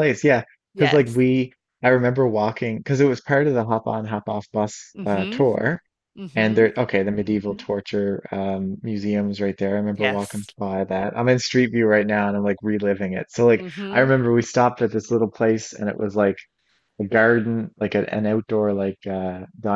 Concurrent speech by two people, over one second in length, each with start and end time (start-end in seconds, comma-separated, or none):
none